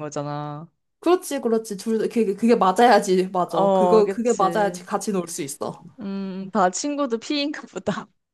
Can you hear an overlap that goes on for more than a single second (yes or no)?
yes